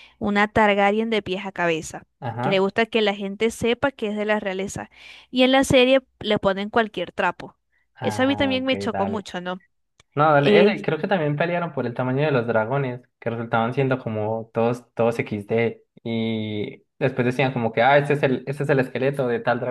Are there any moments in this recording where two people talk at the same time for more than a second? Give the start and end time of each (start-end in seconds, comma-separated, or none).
8.0-9.3